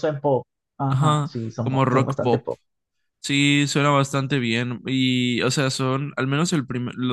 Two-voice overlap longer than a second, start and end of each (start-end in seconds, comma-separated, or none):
0.9-2.5